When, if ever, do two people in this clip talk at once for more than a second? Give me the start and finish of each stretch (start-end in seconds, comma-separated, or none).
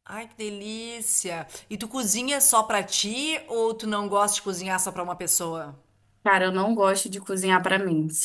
none